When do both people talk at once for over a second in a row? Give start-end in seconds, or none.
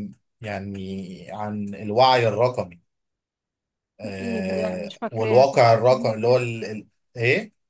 4.2-6.5